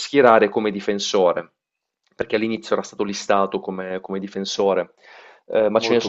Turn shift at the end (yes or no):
no